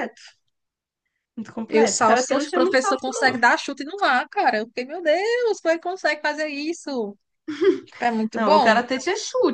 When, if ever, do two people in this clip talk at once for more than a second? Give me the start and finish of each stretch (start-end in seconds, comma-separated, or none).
1.7-3.4